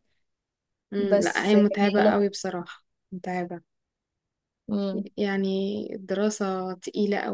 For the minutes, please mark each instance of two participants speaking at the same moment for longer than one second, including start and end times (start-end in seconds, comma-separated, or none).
1.0-2.4